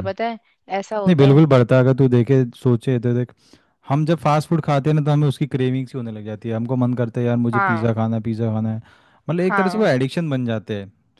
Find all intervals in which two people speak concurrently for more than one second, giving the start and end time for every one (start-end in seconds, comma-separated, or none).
none